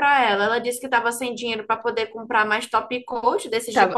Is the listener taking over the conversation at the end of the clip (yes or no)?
yes